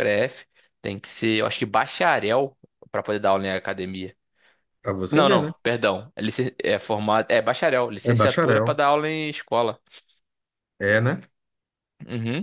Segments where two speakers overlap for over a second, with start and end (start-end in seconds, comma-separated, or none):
none